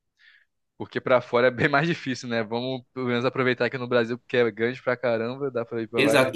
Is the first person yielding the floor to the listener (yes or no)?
yes